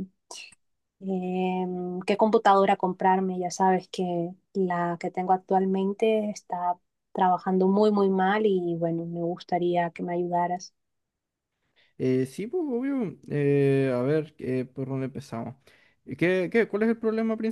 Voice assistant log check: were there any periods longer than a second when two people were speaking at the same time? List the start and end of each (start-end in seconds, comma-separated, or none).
none